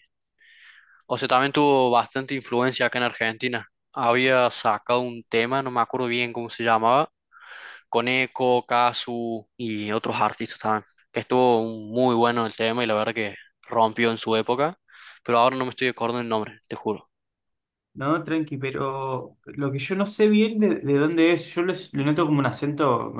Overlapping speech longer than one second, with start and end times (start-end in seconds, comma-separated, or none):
none